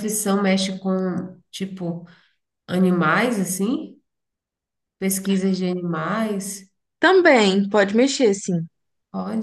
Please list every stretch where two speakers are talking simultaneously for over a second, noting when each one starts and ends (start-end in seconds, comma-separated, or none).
none